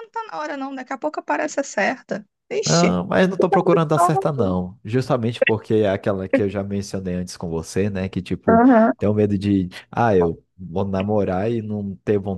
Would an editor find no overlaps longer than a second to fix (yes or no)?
yes